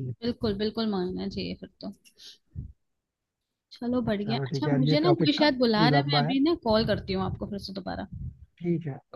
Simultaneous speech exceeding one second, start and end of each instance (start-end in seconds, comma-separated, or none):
4.2-6.3